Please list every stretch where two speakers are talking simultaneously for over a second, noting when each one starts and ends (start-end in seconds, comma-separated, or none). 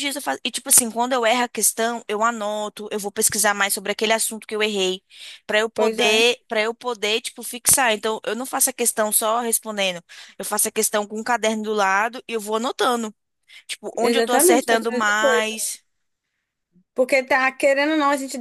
14.0-15.6